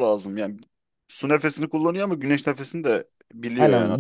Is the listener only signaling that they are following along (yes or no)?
no